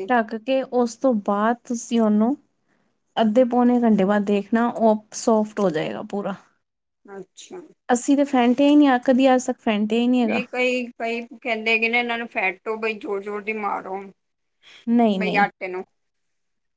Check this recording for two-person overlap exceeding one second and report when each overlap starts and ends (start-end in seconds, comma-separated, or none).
none